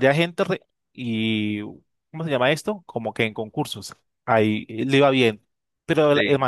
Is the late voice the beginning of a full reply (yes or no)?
no